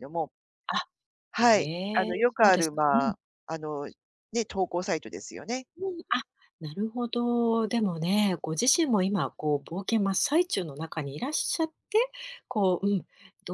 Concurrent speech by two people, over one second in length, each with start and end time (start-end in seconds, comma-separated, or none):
1.4-3.1